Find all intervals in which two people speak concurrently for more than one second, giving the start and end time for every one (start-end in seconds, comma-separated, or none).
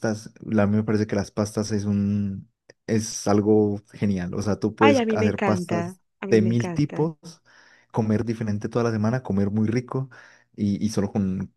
4.8-7.1